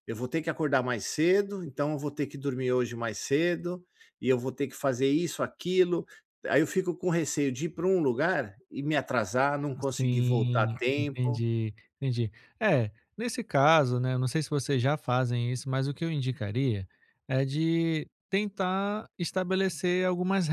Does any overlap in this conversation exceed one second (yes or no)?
yes